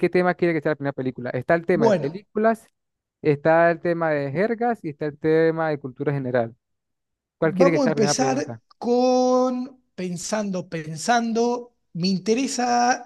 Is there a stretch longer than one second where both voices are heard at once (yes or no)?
yes